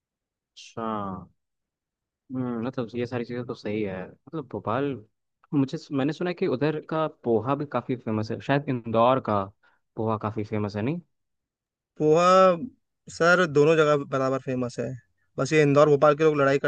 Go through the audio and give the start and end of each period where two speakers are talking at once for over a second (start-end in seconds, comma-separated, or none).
none